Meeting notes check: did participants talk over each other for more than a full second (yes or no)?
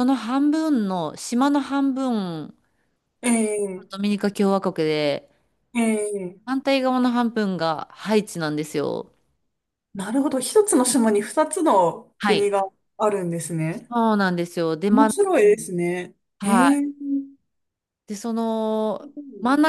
no